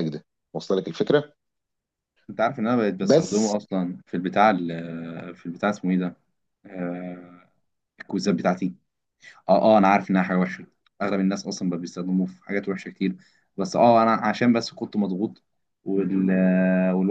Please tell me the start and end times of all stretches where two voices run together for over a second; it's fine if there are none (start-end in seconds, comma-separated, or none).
none